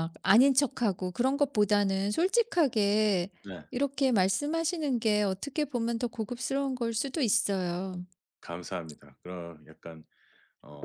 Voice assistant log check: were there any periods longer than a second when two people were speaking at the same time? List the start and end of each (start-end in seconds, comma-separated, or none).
none